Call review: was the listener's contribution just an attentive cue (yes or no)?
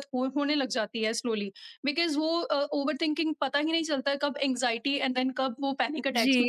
no